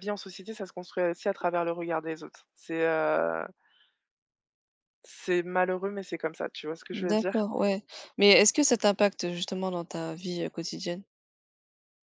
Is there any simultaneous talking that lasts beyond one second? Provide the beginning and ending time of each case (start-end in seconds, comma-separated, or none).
none